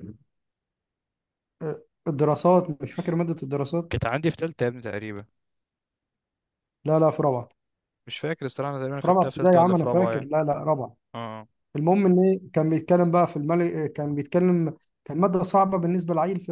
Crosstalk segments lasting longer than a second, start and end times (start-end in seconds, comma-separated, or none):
8.9-10.3